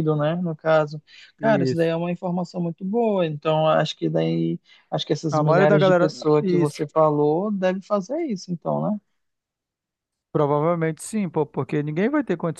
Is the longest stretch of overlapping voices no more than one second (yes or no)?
no